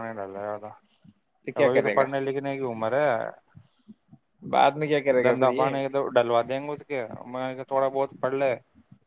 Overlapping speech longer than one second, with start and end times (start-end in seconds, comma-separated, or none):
none